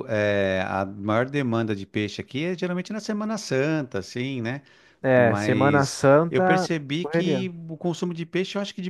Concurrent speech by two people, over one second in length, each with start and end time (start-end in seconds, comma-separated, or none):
5.1-7.5